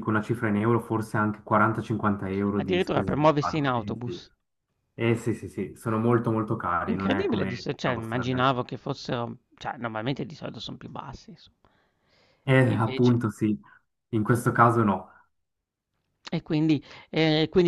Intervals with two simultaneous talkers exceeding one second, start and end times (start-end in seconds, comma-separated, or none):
2.5-4.3, 6.9-8.6